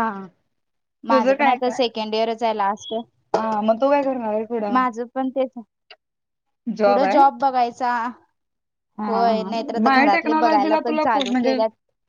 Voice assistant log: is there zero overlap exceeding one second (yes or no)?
no